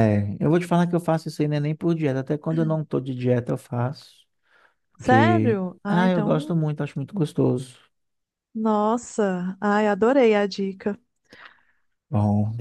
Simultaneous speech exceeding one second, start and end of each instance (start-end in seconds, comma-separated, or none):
5.0-6.5